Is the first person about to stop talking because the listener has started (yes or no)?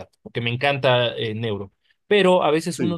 no